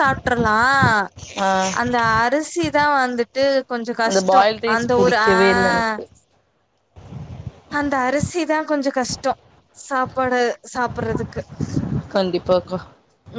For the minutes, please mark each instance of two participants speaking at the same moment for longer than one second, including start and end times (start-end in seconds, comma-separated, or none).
4.1-5.9